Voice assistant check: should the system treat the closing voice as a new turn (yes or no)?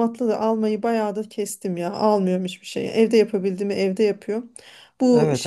no